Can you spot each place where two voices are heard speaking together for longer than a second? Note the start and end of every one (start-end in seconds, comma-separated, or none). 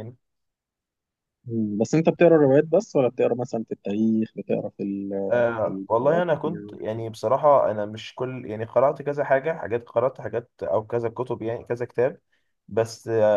5.3-6.8